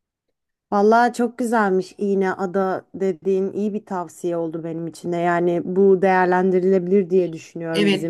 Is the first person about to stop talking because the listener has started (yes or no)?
yes